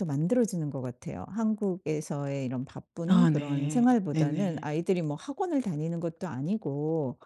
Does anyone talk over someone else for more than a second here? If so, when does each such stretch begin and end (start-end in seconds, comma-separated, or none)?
3.1-4.7